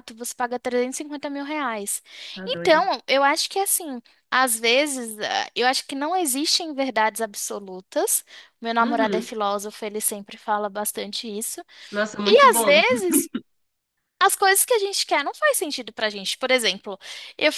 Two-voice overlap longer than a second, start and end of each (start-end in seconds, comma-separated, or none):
none